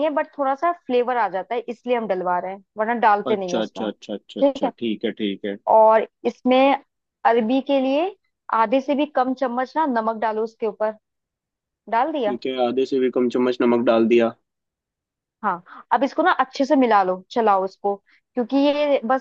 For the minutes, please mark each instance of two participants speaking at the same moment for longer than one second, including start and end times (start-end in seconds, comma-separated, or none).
3.3-4.7